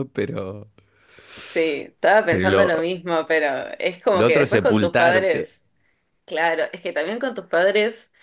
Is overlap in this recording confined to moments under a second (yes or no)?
no